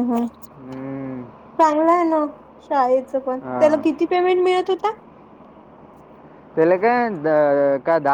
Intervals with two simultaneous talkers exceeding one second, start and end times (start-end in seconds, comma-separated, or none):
none